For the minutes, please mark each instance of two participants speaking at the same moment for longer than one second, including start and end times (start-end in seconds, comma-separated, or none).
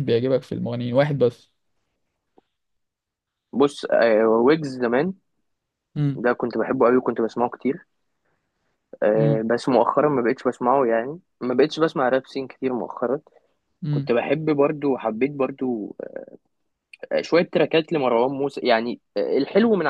none